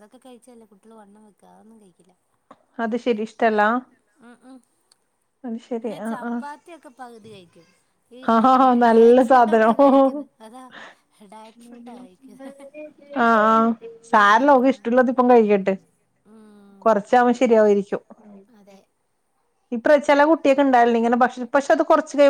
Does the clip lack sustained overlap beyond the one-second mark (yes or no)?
no